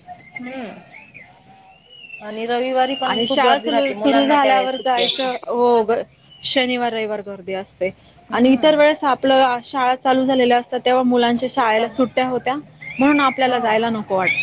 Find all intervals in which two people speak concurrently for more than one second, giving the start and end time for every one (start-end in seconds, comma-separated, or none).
3.1-5.3